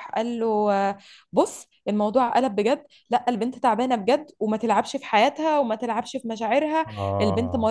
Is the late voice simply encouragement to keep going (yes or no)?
yes